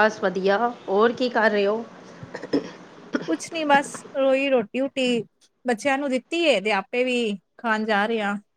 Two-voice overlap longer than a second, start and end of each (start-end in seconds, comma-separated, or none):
none